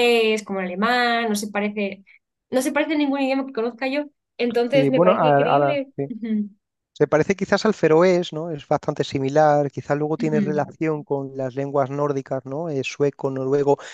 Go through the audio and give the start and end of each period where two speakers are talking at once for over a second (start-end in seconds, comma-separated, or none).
4.7-6.1